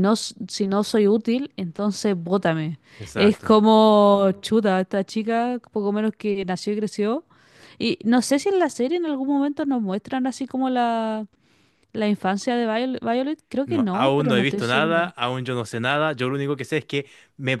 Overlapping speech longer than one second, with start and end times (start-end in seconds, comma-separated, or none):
13.6-15.1